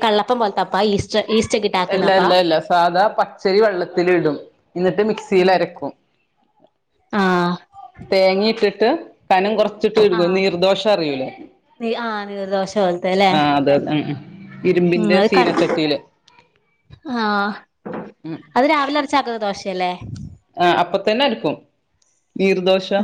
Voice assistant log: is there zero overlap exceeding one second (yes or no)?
yes